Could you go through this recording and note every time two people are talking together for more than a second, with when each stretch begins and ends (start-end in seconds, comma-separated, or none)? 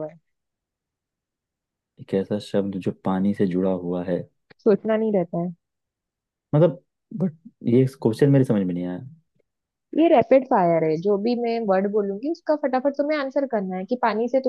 none